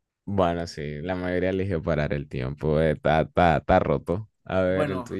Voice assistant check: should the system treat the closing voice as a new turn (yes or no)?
yes